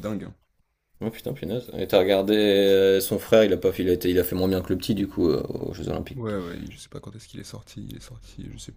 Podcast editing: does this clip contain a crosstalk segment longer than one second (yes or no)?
no